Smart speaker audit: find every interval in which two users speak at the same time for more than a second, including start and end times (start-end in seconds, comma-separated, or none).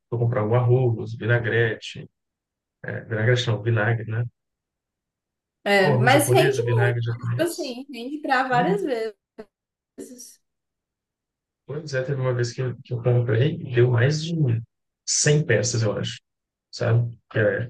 5.8-7.8